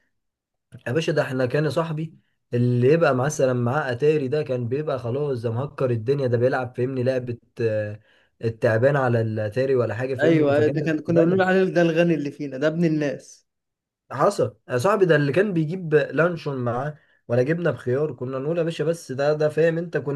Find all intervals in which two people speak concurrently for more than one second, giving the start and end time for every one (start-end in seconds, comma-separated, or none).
10.2-11.6